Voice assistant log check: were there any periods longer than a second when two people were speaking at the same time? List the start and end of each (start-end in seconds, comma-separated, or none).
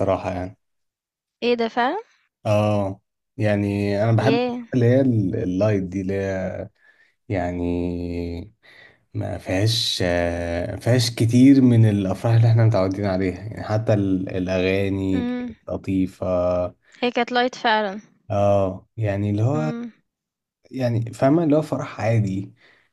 none